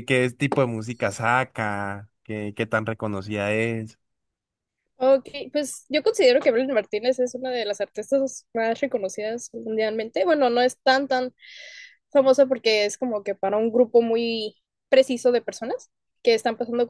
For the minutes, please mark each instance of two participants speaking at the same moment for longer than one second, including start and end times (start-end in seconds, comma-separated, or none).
none